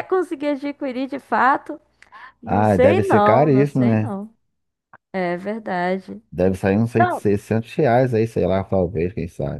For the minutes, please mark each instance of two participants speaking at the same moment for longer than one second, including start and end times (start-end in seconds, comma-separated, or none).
2.5-4.1